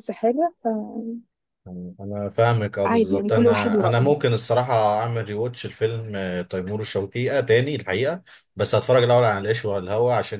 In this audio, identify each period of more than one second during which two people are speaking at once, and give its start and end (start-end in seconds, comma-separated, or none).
2.8-4.2